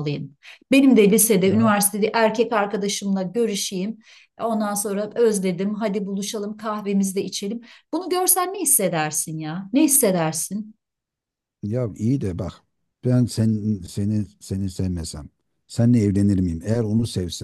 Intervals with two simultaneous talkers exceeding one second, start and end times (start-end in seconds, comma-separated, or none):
none